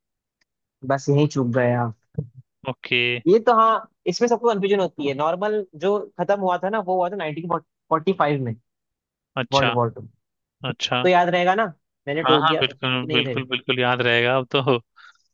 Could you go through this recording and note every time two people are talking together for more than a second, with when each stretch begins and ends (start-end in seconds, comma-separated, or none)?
12.2-13.5